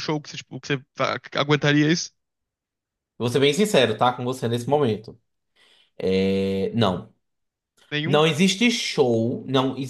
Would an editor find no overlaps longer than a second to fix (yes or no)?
yes